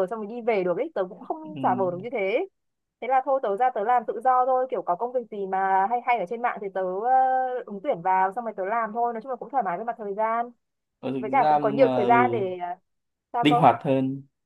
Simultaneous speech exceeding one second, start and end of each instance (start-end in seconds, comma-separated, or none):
11.2-12.4